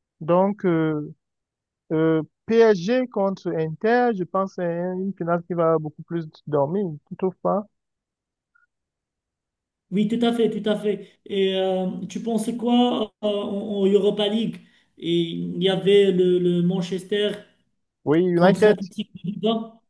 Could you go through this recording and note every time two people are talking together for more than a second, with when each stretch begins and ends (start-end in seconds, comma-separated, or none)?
none